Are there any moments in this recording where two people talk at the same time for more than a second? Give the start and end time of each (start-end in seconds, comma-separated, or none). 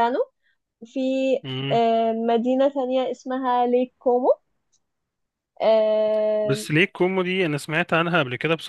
none